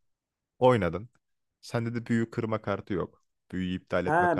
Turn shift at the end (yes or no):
yes